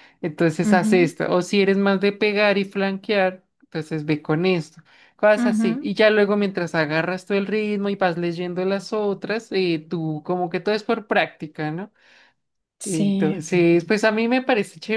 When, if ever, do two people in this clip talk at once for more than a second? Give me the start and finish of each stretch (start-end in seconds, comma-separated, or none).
none